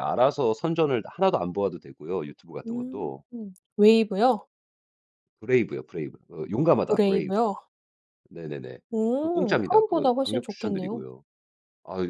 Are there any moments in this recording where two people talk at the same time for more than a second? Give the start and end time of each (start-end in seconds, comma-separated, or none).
9.2-11.0